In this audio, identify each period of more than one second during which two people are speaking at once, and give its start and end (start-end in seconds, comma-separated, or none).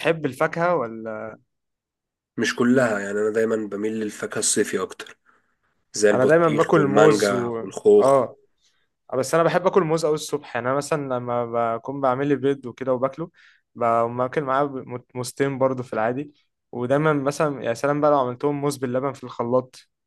6.1-8.2